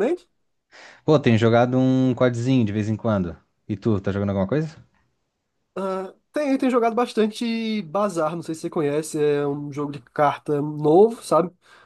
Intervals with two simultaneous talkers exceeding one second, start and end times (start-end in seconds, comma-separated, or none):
none